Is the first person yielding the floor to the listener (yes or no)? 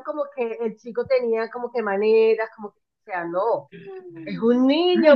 yes